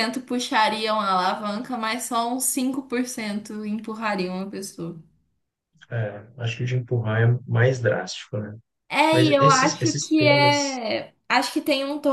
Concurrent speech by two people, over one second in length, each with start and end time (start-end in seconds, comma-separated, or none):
9.1-10.8